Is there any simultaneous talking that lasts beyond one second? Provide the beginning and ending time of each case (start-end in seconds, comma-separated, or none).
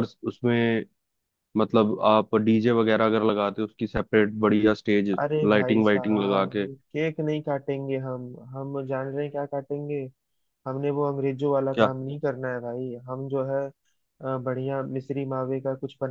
5.2-6.7